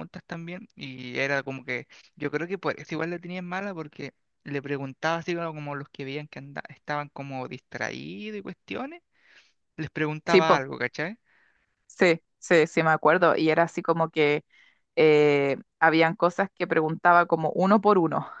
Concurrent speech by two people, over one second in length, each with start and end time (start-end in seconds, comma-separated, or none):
none